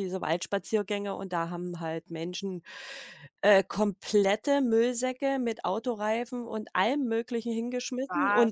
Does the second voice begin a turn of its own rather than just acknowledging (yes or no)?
no